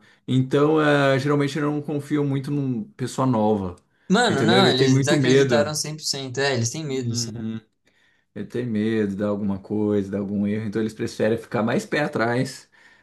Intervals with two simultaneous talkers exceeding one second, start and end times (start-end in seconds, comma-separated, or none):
4.3-5.7